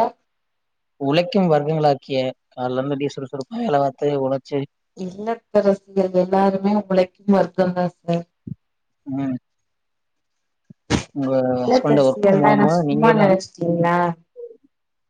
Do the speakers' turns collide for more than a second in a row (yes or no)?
yes